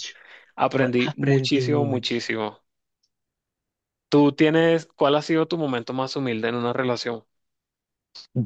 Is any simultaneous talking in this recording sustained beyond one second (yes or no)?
yes